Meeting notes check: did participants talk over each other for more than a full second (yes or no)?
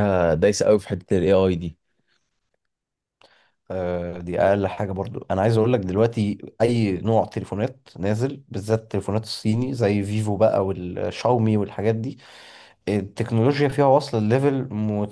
no